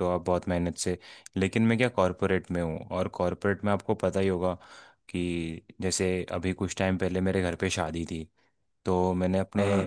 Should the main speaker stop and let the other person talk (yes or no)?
no